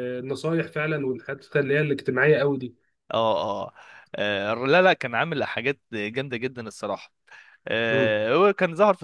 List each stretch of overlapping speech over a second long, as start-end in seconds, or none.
none